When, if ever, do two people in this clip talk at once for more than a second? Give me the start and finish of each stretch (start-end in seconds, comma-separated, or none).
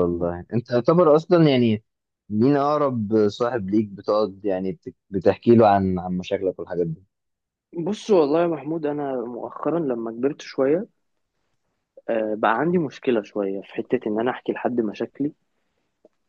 none